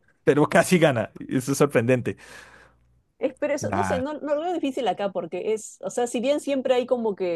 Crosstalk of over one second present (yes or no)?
no